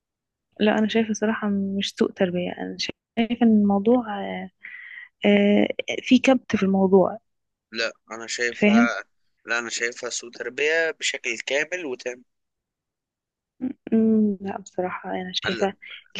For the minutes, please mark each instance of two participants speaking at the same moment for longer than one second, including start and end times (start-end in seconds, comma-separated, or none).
none